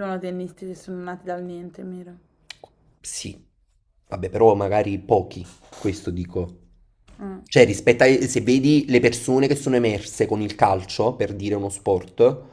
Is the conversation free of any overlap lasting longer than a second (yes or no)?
yes